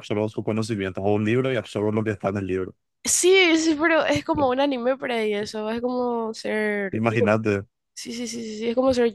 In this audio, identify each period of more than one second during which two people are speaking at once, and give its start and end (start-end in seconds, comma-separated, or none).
none